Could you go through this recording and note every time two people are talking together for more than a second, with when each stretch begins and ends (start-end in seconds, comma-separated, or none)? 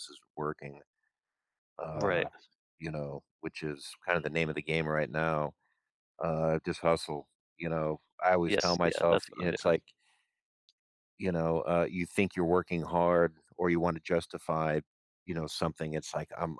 8.5-9.7